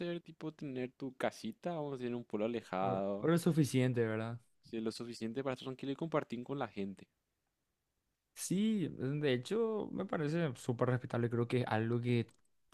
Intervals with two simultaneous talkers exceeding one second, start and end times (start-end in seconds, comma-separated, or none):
none